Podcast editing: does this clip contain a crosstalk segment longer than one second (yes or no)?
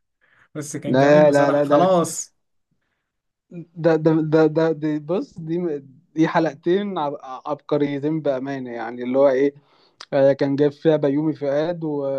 yes